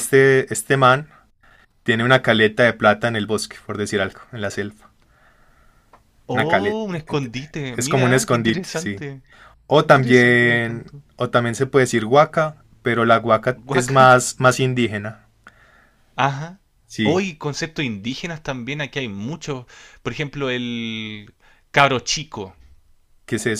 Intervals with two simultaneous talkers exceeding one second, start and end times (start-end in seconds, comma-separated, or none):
7.8-9.0, 9.8-11.0